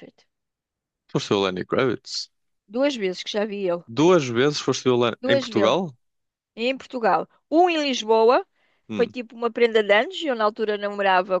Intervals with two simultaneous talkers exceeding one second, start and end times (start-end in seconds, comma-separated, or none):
none